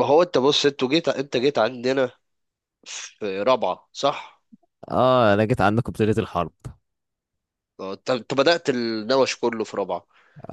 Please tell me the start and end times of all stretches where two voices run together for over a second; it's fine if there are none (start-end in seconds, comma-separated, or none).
none